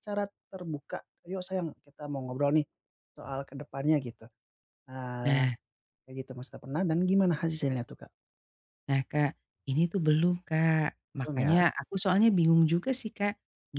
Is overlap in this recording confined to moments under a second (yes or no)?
yes